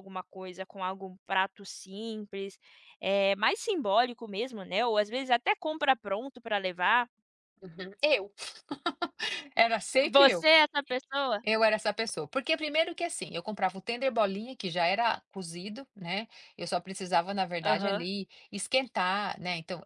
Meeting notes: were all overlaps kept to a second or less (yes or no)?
yes